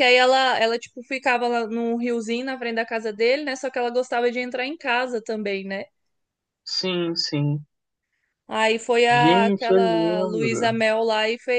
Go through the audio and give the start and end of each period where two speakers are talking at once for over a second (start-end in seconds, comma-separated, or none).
9.1-10.8